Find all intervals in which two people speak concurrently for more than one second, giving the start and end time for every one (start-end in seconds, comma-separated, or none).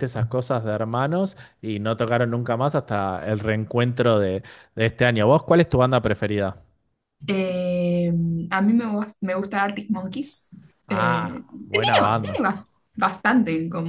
10.9-12.4